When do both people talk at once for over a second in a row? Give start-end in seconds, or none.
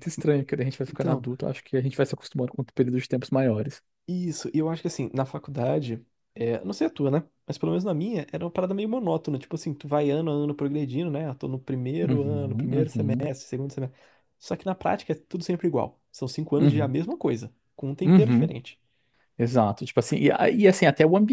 12.0-13.3